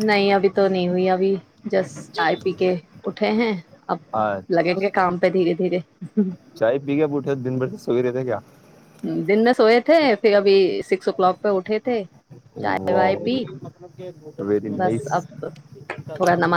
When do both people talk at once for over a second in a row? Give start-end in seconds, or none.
none